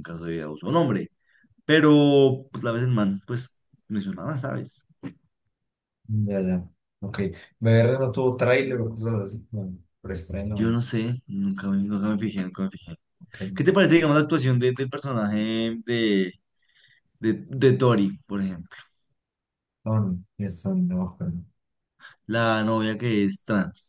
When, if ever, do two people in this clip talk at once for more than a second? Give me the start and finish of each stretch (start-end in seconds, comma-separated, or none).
none